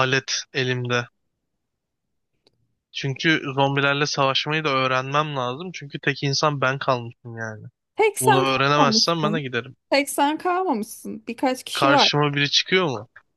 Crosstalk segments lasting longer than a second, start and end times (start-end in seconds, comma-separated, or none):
8.2-9.4